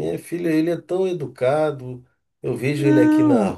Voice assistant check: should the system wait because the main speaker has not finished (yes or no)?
yes